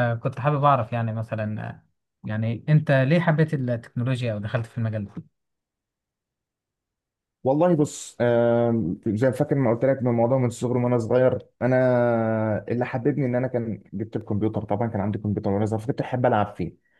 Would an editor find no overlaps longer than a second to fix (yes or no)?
yes